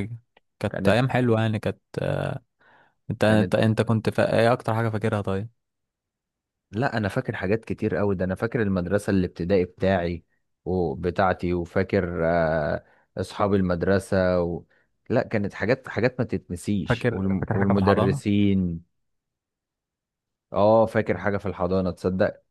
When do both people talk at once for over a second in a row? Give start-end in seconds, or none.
16.9-18.2